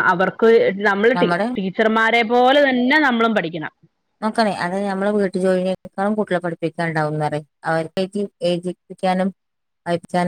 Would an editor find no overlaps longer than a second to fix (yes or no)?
yes